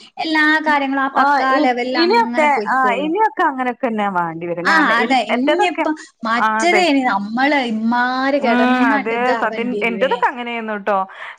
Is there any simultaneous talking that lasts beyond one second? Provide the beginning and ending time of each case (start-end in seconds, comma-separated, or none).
none